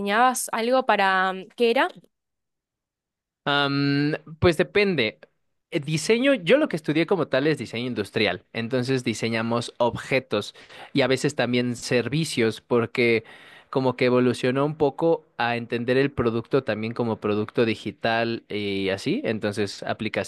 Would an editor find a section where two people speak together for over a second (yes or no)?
no